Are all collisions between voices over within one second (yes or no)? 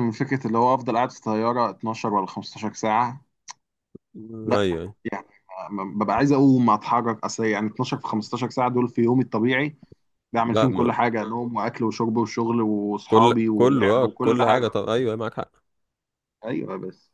no